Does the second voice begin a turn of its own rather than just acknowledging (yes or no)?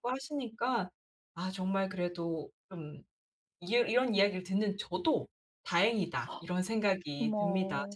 yes